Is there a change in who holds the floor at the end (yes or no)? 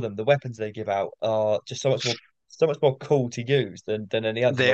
no